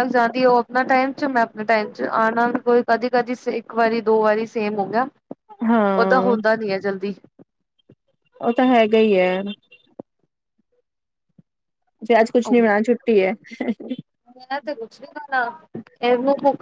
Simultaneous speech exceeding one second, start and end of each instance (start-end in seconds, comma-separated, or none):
none